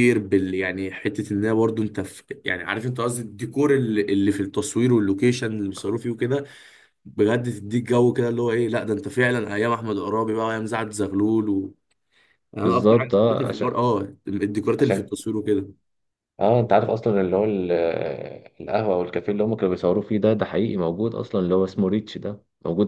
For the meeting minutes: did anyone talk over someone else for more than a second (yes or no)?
yes